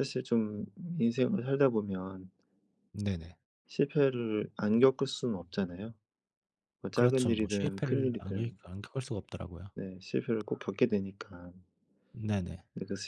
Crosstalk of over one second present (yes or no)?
yes